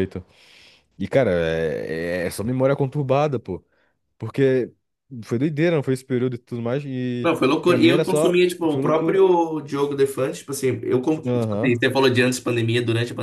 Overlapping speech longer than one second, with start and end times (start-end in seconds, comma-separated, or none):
7.2-9.2